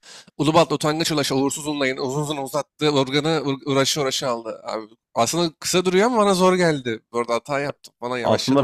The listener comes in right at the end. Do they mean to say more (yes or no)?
yes